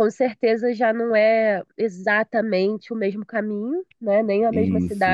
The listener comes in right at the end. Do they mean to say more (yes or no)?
no